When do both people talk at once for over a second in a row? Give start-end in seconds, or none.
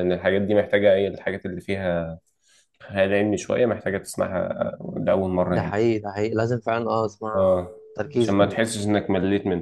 none